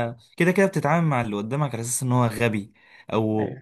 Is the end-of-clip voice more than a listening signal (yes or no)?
no